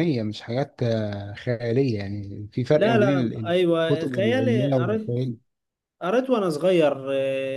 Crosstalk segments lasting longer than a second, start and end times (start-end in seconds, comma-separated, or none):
2.7-5.2